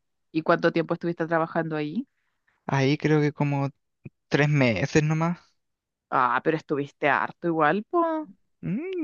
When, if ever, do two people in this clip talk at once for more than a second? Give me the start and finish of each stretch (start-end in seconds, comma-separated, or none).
none